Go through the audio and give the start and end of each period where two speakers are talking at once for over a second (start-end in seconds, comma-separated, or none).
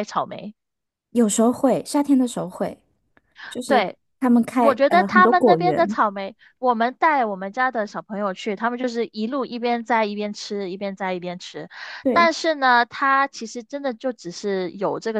4.6-6.0